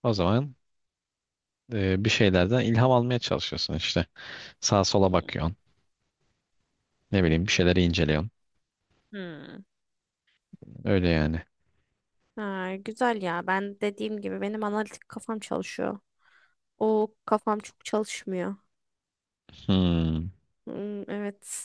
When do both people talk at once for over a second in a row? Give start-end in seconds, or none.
none